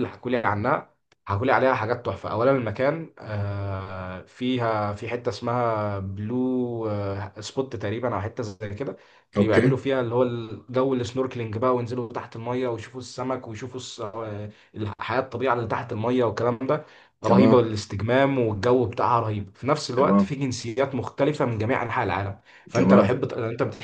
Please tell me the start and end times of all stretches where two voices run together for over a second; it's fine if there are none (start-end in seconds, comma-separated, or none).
none